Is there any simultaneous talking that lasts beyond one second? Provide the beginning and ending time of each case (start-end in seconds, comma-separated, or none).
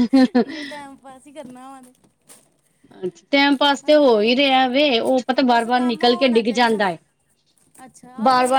5.5-6.8